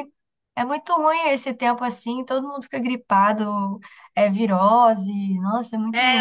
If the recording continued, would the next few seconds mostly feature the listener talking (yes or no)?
yes